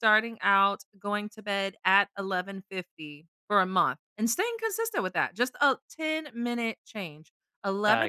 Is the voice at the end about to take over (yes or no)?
no